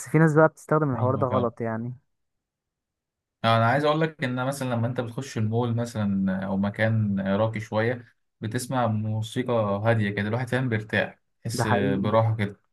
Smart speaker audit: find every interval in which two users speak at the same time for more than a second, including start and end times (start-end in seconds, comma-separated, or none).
none